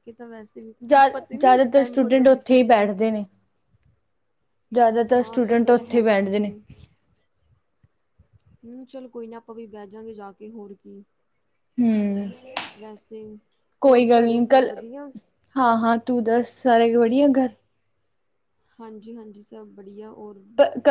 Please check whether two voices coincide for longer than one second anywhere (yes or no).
yes